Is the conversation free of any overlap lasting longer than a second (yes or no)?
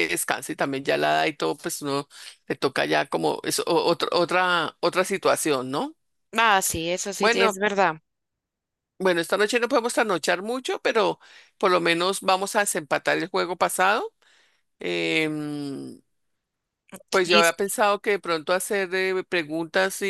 yes